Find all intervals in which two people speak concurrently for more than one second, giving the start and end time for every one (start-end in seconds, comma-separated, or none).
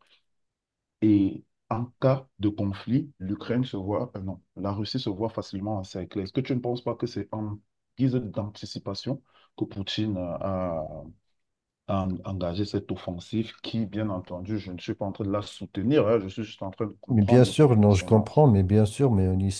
17.1-18.5